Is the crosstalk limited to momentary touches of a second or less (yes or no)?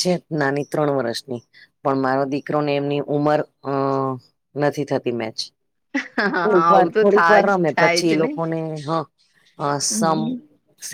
no